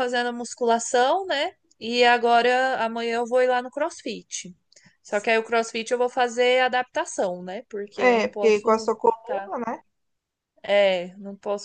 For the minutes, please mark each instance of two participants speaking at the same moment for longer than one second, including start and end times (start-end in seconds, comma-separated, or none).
8.0-9.5